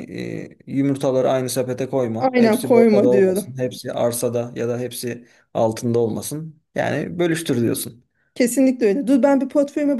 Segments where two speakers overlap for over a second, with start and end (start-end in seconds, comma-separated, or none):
2.2-3.5